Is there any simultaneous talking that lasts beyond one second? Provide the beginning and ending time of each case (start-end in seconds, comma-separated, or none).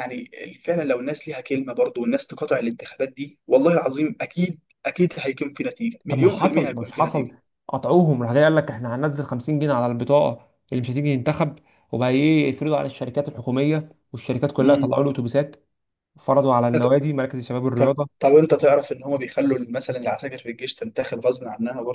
6.1-7.3